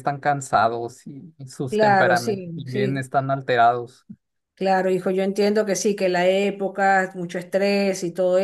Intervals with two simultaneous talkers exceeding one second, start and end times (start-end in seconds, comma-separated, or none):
1.7-3.0